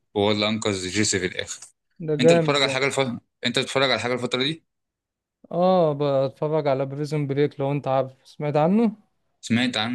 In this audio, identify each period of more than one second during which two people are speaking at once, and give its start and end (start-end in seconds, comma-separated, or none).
none